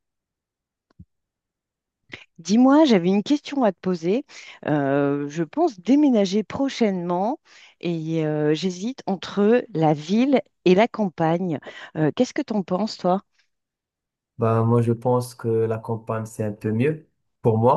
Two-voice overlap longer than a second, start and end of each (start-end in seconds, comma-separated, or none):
none